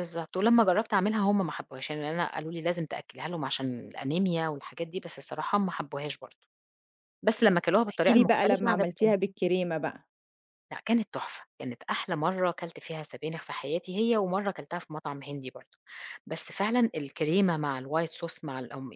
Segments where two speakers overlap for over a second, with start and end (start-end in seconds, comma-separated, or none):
7.9-9.1